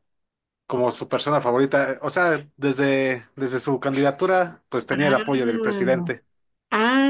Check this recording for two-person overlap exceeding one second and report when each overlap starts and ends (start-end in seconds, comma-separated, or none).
4.9-6.1